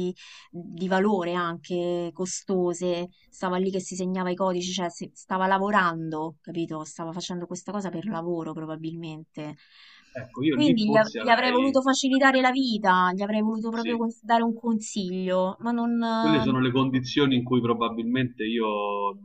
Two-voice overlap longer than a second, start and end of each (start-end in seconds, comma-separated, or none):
10.5-11.8